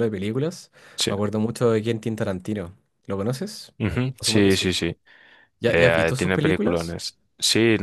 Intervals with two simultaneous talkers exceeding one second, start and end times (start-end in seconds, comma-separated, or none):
5.7-7.0